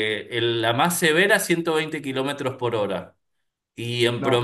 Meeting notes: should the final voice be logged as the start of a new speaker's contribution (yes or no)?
no